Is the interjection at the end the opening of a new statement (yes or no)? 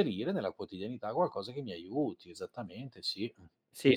yes